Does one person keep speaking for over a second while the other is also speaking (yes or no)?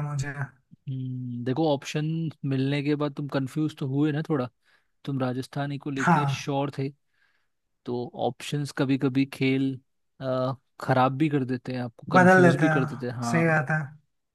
yes